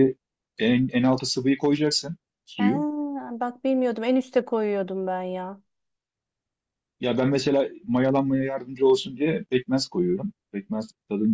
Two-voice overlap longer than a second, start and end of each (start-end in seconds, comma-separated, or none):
none